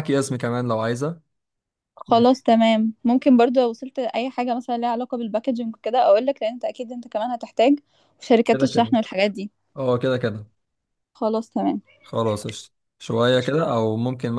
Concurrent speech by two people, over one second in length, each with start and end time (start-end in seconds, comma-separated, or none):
none